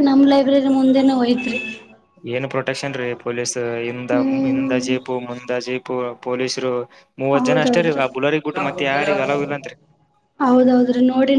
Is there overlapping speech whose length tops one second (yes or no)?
no